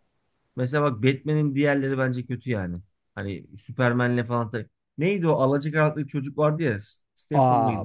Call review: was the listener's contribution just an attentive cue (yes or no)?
no